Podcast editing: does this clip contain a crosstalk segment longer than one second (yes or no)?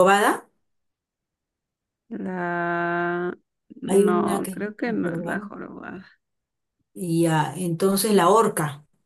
yes